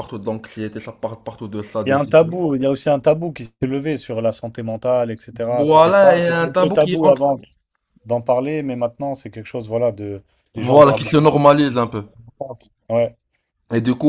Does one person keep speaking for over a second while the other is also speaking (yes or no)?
yes